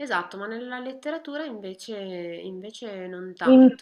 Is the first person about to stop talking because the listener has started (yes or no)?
yes